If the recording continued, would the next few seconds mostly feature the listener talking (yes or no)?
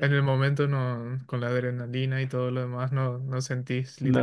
yes